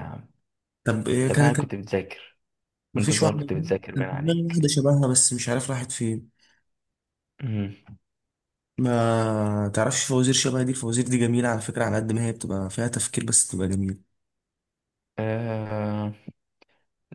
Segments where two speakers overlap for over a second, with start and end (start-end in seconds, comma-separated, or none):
3.0-4.7